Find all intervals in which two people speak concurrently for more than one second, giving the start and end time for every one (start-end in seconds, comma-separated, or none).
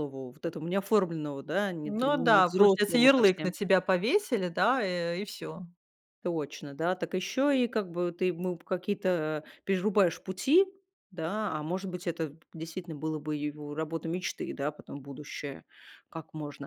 1.9-3.5